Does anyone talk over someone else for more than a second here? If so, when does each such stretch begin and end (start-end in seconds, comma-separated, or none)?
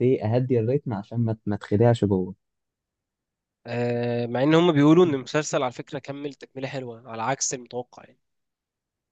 none